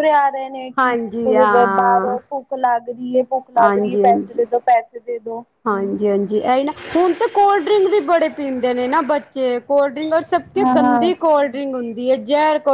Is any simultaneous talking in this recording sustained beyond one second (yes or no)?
yes